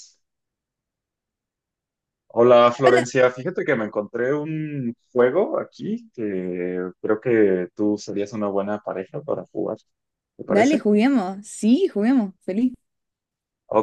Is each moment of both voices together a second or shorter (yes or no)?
yes